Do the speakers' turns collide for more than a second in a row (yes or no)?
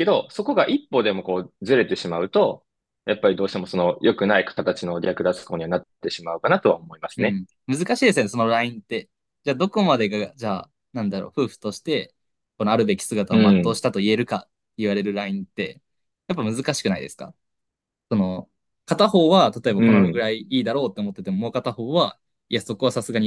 no